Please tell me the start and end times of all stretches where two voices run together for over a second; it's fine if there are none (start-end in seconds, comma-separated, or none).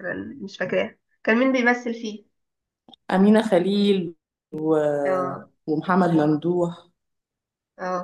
none